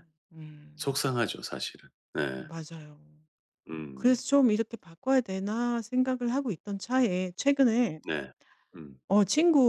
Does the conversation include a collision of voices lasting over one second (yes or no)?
no